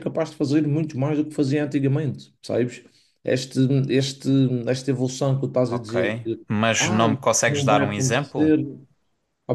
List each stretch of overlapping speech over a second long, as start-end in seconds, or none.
6.8-8.5